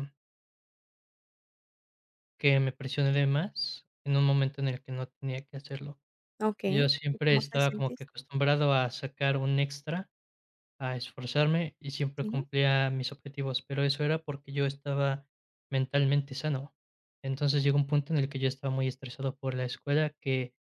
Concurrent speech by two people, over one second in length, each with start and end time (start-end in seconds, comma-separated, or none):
6.7-8.1